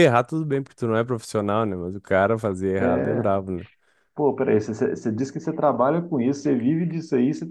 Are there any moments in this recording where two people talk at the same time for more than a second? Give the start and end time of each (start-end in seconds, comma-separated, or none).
none